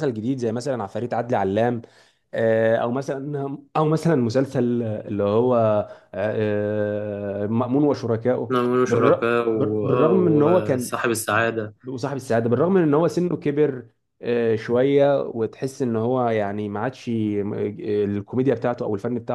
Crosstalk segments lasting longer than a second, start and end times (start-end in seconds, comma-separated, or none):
8.5-10.9